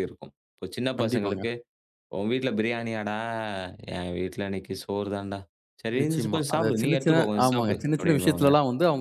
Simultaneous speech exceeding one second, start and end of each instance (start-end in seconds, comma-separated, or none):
6.0-8.5